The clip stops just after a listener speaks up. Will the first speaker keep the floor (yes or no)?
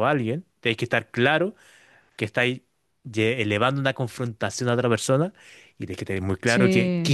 yes